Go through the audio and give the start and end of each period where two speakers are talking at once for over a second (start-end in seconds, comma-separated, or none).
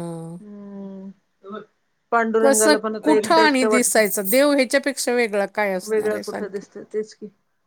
2.4-4.0